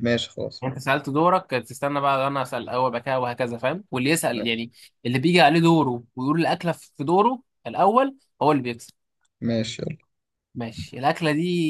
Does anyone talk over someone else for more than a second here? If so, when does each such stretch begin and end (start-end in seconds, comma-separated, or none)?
none